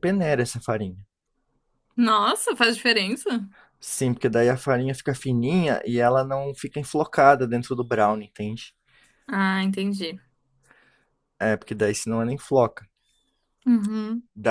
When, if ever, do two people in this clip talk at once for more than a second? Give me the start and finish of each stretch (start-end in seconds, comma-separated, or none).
none